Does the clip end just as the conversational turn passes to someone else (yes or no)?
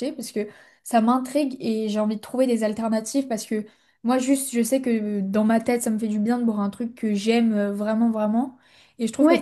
yes